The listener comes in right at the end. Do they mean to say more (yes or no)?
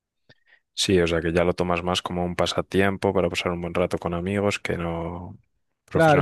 yes